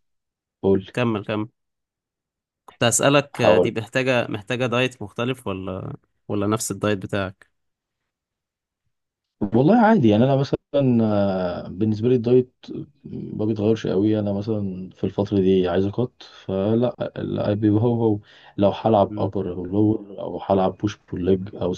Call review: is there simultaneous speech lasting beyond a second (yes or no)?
no